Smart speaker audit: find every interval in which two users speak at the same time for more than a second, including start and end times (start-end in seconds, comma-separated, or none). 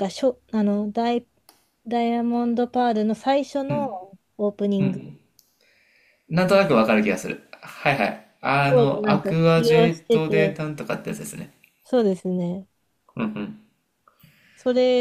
8.7-10.6